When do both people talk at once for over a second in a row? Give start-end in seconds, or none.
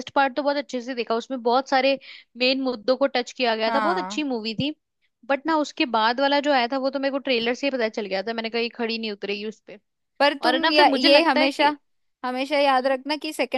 10.4-11.7